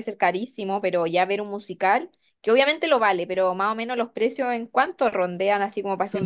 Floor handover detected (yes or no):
yes